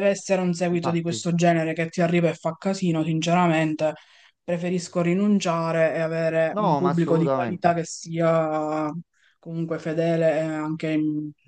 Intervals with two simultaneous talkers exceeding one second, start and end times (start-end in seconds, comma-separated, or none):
6.5-7.7